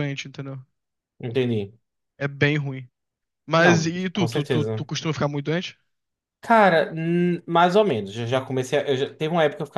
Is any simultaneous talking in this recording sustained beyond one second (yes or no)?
yes